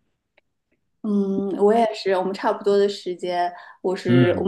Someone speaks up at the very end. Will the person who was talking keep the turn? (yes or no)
yes